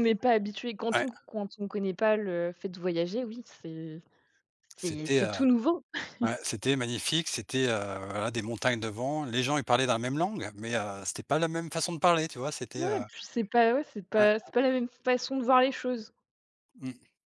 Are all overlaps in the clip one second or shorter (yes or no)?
yes